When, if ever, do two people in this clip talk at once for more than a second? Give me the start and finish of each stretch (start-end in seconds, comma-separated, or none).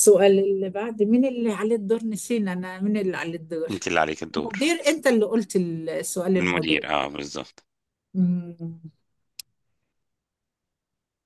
none